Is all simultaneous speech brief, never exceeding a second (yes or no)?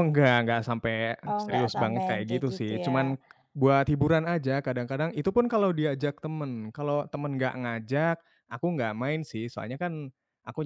no